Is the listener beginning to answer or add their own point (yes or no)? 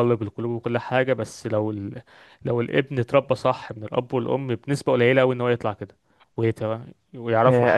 yes